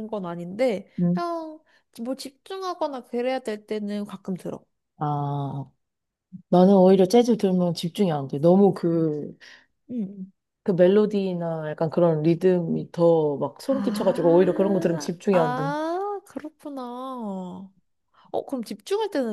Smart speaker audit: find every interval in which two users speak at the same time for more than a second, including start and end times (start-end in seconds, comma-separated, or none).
13.7-15.7